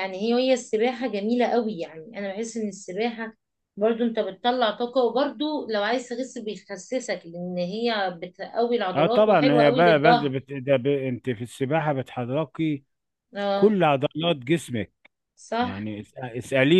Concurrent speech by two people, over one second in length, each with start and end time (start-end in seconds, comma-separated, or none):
8.9-10.3